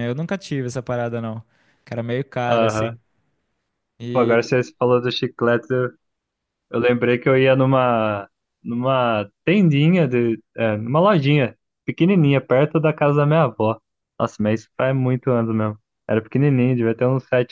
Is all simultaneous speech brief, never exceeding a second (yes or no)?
yes